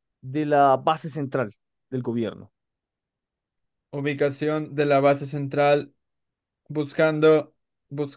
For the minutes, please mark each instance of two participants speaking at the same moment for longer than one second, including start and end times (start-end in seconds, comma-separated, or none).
none